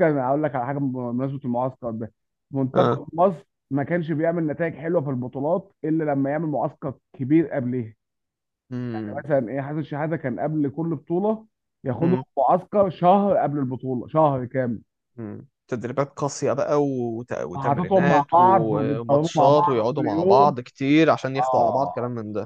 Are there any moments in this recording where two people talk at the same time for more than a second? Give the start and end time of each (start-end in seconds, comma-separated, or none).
17.6-20.5